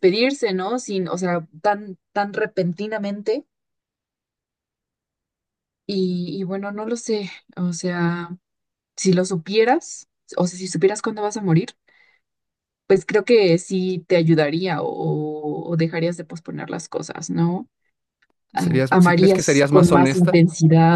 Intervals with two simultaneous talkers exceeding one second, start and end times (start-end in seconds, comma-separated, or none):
18.5-20.4